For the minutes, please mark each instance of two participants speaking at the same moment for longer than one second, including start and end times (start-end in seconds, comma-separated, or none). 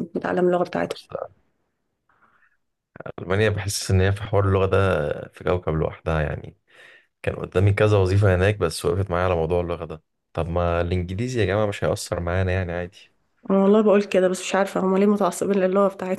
none